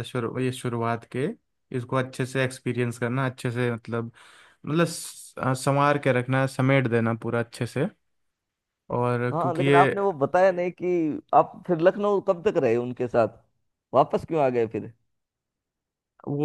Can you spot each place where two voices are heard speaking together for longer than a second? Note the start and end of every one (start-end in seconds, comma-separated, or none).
none